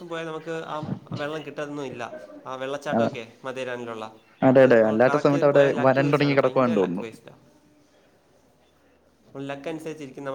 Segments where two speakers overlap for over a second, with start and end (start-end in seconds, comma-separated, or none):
4.5-7.0